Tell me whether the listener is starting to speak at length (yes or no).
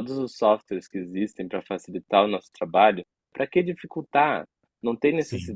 no